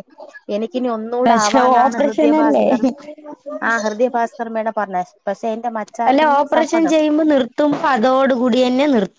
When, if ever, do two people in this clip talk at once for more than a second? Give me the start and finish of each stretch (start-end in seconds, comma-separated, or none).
1.2-2.7